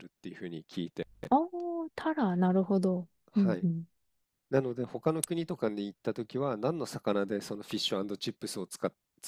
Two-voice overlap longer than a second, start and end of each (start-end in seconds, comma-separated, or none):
none